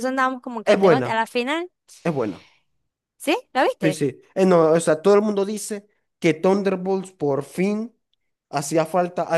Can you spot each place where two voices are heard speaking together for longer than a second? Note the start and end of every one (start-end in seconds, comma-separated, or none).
none